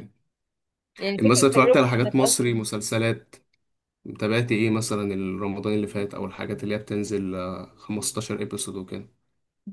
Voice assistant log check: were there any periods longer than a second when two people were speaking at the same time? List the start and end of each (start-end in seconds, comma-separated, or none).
1.2-2.6